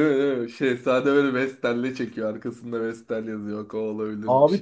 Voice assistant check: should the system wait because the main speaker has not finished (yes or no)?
no